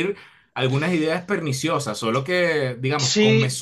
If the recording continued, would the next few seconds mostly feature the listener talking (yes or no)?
yes